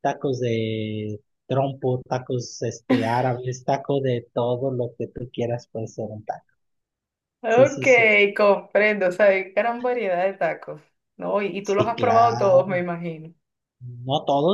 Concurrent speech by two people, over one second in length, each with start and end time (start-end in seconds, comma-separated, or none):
11.6-12.9